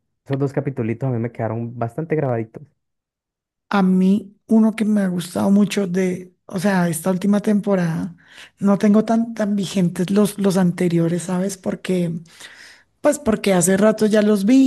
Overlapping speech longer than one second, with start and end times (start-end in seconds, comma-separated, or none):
none